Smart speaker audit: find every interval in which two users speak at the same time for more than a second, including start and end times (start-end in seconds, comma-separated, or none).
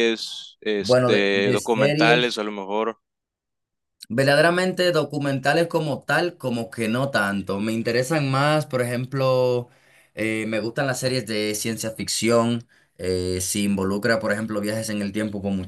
0.8-2.4